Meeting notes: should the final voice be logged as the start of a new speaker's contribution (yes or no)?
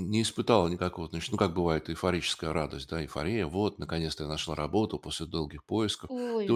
no